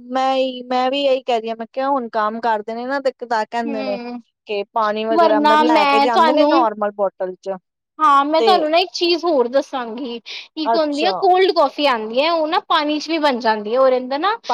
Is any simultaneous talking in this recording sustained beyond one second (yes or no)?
yes